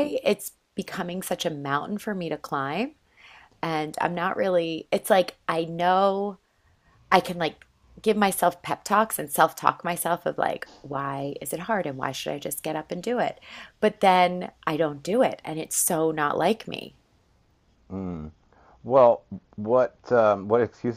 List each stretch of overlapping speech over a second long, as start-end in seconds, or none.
none